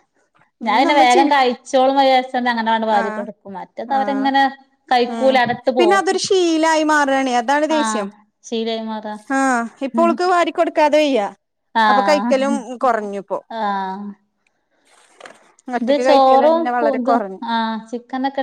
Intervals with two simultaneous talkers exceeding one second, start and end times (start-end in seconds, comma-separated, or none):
15.8-17.4